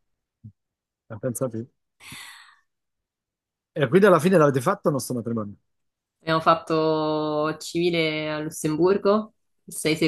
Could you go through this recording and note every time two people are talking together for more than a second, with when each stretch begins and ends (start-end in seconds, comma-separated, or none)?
none